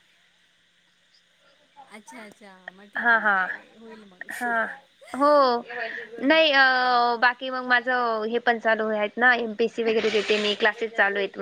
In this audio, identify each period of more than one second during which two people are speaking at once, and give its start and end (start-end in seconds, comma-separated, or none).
none